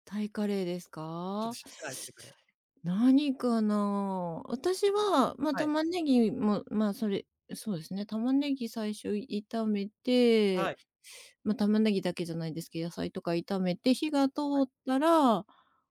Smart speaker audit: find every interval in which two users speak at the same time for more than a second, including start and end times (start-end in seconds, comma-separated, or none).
none